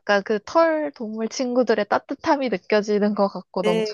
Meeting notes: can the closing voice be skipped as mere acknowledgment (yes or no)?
no